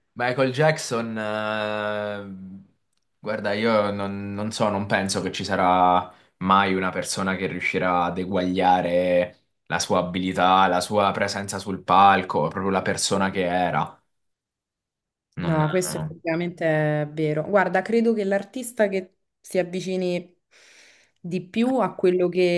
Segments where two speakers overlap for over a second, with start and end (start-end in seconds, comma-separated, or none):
none